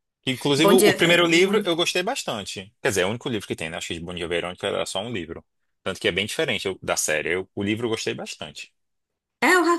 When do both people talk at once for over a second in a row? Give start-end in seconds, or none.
0.6-1.8